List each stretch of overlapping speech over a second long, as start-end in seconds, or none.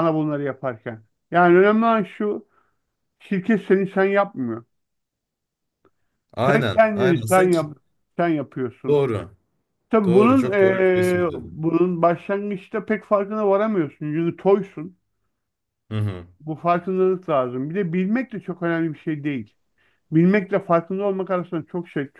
6.4-7.7, 10.1-11.6